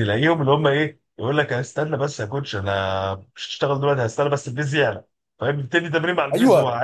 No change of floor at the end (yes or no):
no